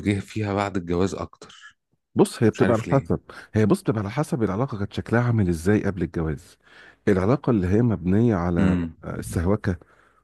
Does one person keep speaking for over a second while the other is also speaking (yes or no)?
no